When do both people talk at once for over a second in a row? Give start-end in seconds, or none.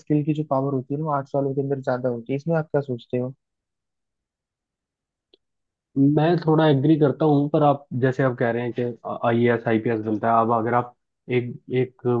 none